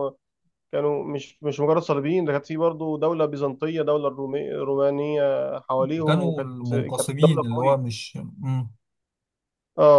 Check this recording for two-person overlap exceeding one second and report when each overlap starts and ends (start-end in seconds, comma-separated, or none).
6.0-7.9